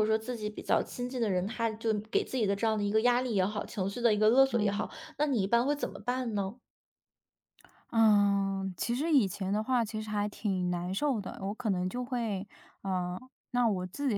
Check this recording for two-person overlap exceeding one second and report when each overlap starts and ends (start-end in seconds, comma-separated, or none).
none